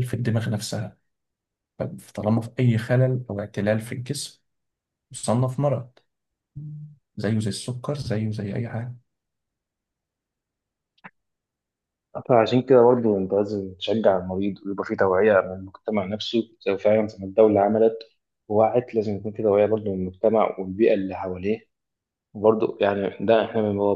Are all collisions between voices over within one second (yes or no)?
yes